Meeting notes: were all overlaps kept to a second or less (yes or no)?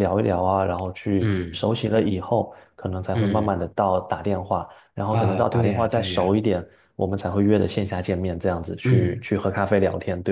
no